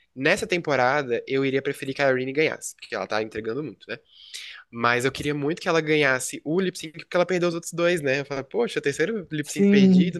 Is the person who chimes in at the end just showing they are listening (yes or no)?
yes